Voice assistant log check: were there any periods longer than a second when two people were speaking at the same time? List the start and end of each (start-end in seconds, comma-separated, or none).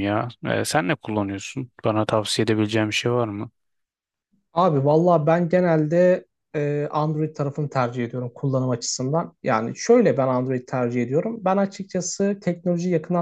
none